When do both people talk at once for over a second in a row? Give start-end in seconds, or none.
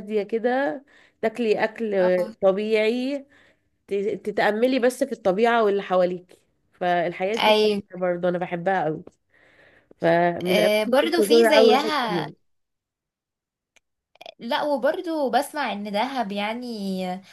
10.4-12.3